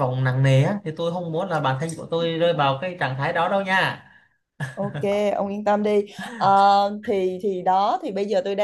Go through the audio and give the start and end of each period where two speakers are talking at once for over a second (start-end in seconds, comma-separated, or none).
none